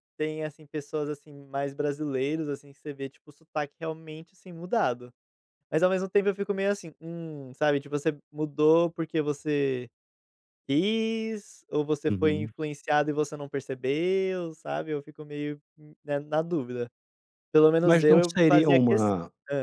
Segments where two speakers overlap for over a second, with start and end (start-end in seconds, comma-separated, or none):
17.8-19.1